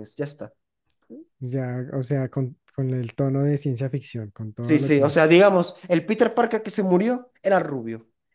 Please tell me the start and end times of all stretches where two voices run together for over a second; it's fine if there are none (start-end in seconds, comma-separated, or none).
none